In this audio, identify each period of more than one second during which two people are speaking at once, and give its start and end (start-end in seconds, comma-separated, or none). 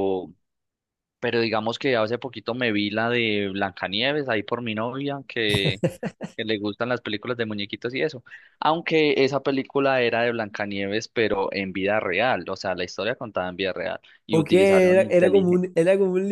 14.3-15.7